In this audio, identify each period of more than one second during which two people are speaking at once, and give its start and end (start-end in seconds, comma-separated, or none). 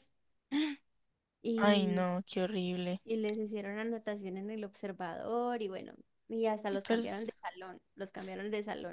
none